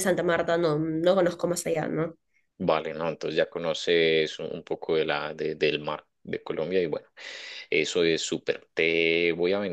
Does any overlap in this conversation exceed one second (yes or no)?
no